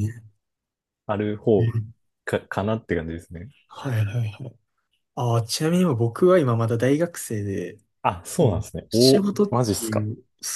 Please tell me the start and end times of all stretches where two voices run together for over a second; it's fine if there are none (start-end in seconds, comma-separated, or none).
8.4-10.1